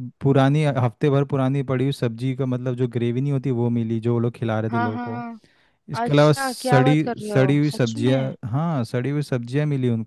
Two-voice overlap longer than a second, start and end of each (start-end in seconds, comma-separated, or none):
6.0-8.3